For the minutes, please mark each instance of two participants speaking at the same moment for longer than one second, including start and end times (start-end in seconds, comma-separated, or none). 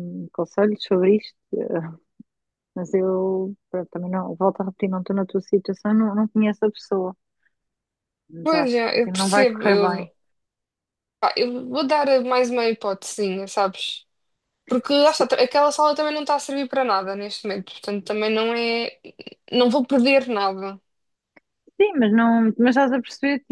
8.4-10.1